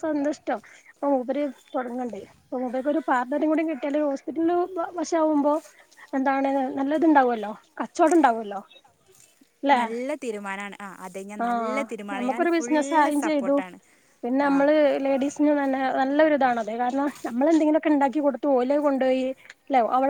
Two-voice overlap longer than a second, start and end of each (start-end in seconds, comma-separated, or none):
11.4-13.6